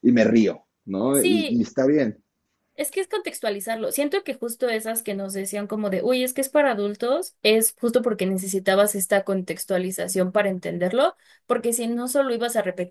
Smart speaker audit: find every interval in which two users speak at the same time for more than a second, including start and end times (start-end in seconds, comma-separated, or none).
none